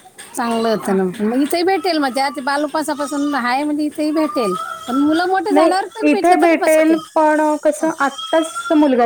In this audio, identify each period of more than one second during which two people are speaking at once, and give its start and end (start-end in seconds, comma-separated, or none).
none